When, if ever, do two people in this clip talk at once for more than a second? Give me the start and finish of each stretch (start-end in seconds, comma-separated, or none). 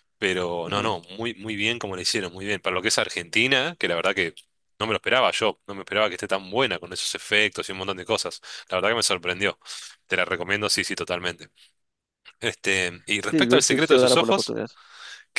13.2-14.6